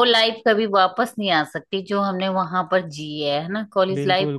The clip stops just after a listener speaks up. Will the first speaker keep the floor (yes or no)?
no